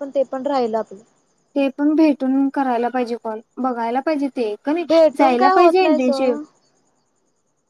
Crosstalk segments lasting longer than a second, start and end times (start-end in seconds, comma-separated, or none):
4.9-6.4